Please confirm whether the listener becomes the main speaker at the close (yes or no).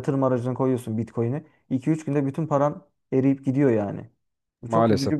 yes